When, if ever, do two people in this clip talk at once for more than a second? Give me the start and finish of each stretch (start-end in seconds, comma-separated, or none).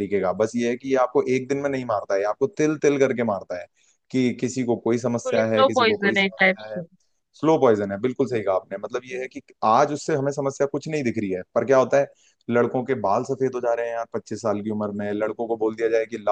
5.3-6.8